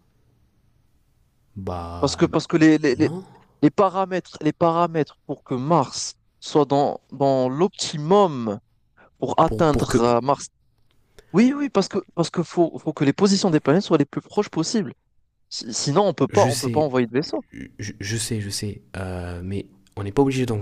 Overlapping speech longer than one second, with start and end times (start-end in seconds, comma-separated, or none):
none